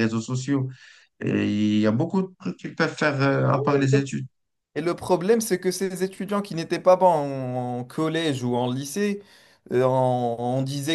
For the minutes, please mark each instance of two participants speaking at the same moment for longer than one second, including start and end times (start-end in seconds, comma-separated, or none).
none